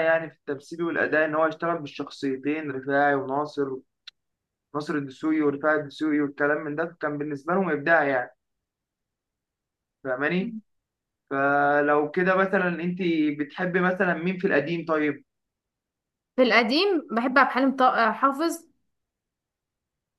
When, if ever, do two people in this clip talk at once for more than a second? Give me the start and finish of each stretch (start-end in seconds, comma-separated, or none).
none